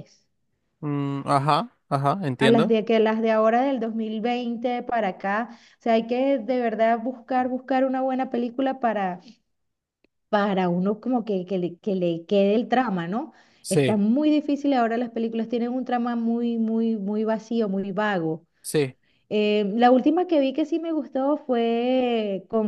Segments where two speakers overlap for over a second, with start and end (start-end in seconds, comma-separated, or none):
none